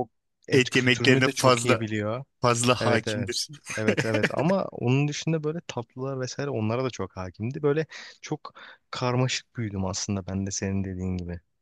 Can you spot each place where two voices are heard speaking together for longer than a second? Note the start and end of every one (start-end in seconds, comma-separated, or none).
0.5-1.8